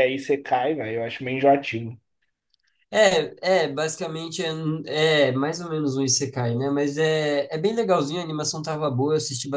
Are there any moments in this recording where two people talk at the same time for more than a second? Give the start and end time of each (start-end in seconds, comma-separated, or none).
none